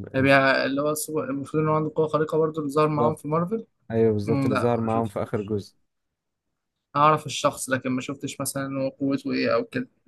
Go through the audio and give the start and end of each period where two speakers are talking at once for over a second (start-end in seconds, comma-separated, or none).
4.2-5.5